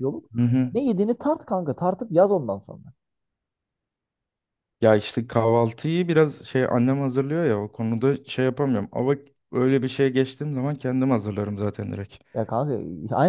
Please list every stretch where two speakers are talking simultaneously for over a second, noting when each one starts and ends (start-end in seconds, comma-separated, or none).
none